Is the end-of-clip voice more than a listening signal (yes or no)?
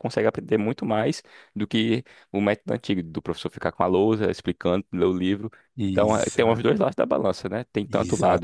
no